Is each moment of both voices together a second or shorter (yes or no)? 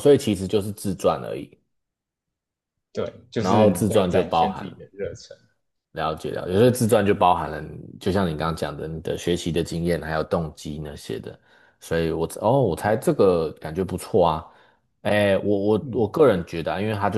no